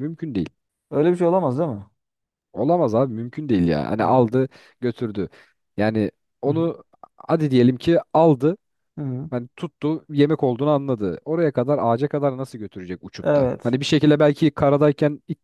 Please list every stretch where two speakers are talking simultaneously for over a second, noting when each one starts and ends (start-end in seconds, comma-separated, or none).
none